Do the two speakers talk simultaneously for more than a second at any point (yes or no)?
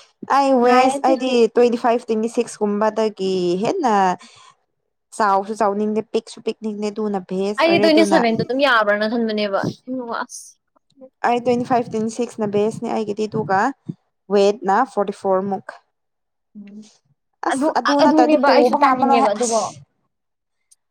yes